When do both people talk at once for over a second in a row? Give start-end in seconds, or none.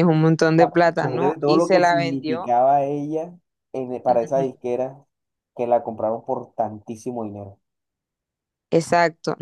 0.6-2.5